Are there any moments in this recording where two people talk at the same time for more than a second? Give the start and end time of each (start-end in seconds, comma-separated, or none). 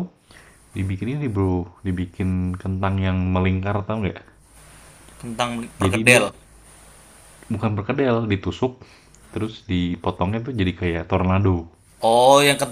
none